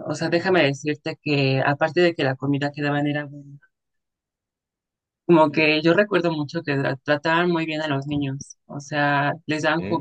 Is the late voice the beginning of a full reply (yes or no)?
no